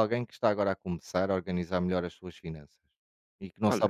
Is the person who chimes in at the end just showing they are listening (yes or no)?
no